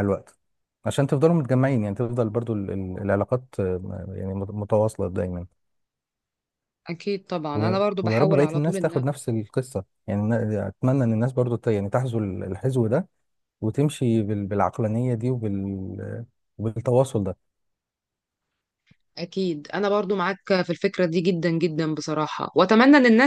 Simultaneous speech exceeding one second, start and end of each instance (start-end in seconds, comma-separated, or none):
7.5-9.0